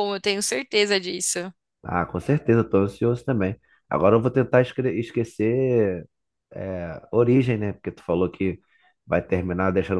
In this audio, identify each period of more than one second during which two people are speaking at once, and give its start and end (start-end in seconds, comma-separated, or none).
none